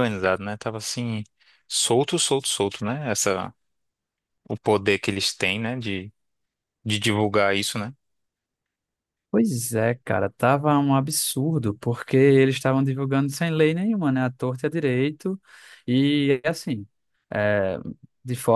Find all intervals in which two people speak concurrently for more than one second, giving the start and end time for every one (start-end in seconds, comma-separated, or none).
none